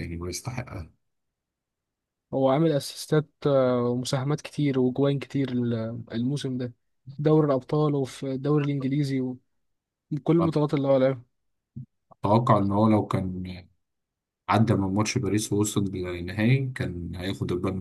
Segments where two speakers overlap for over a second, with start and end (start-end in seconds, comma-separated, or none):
none